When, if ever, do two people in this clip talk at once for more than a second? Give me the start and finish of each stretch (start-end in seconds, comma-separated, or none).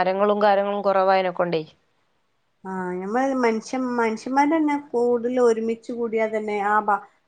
none